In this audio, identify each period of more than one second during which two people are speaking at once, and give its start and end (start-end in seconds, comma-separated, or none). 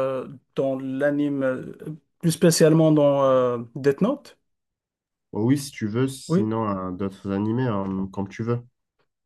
none